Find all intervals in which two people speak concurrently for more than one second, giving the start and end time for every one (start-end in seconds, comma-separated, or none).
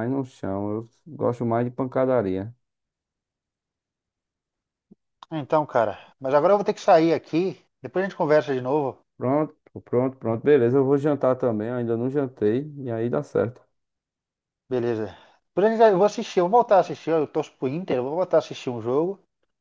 none